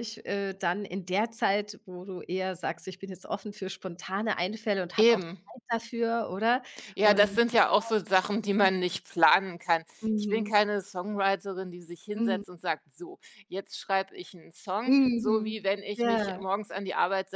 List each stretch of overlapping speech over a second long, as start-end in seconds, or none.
14.8-16.4